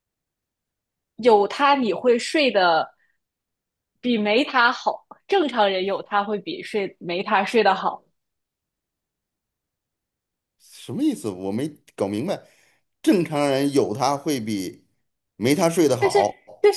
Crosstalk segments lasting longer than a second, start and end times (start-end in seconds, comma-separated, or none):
none